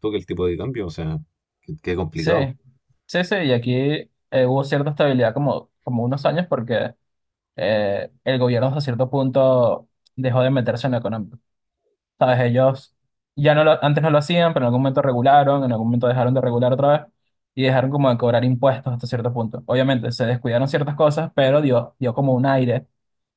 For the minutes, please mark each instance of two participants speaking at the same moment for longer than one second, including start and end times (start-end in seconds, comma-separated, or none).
none